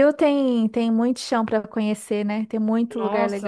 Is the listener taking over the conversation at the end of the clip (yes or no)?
yes